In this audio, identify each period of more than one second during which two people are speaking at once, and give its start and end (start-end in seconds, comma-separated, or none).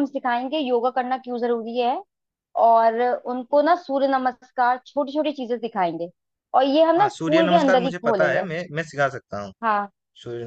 7.0-8.4